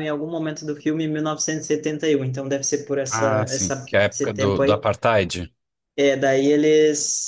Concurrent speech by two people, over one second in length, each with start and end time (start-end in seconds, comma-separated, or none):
3.1-4.8